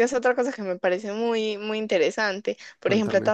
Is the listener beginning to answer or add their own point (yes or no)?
no